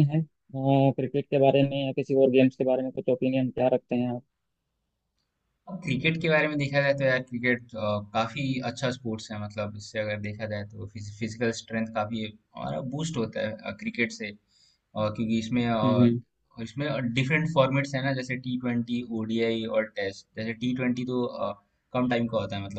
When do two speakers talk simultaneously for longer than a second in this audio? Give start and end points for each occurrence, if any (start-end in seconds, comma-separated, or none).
none